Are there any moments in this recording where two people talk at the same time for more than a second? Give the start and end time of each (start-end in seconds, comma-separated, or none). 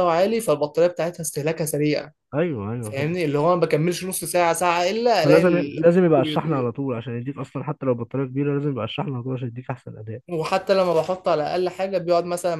5.2-6.7